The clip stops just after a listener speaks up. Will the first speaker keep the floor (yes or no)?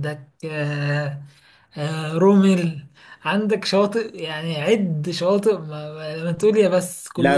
no